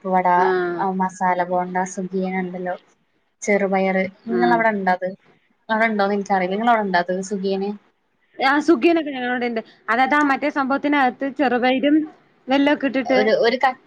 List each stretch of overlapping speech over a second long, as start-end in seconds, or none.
none